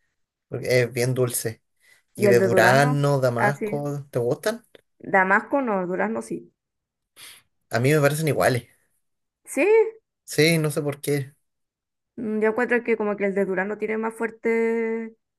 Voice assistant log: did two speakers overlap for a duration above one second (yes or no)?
yes